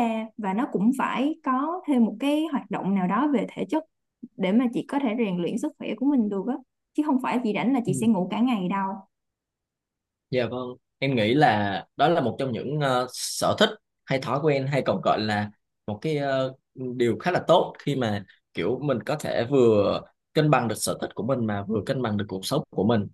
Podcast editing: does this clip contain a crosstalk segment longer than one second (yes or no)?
no